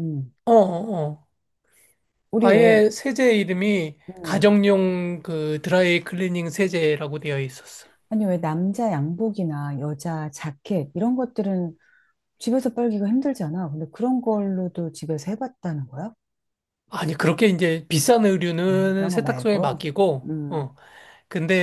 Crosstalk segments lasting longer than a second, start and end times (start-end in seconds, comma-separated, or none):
18.7-20.7